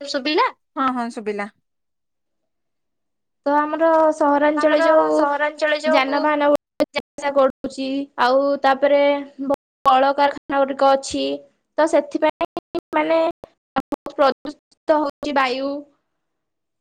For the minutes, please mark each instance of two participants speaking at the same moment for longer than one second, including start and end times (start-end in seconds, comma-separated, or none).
none